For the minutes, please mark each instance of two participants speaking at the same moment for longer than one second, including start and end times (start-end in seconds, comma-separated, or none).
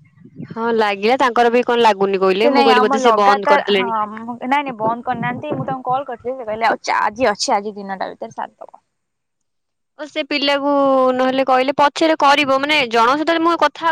2.4-3.9